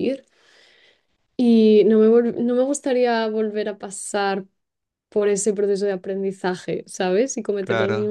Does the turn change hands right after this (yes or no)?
no